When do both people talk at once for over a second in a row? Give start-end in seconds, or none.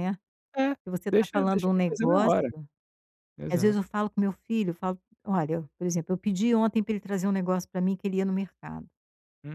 1.1-2.5